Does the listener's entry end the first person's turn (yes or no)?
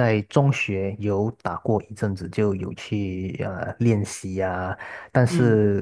no